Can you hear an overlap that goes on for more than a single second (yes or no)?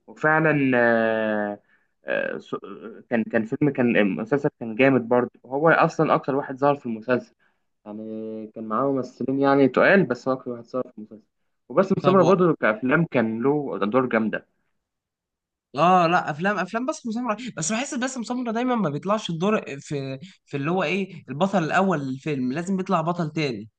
no